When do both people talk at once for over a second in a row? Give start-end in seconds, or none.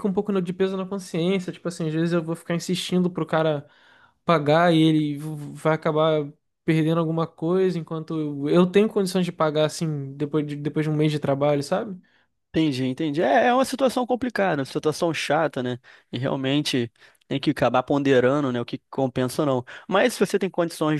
none